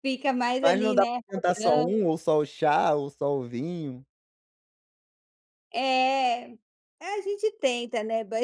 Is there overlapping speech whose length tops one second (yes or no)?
yes